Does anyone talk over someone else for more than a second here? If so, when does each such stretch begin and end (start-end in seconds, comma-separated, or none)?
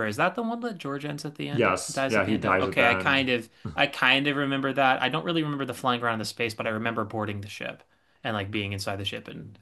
1.5-3.2